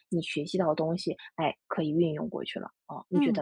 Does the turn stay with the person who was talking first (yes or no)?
no